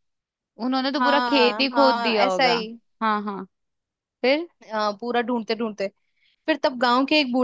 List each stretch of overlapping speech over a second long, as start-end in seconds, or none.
1.0-2.5